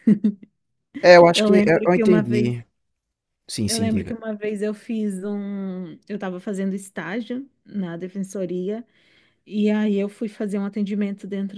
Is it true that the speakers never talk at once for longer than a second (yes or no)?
no